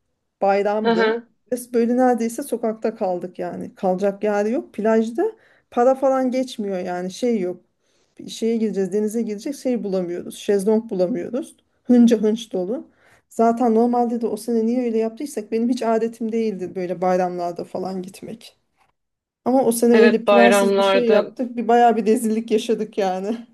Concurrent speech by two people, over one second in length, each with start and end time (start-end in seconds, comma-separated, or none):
19.9-21.3